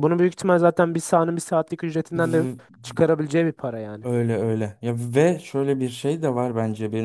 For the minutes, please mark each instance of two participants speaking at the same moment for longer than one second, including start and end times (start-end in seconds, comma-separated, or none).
none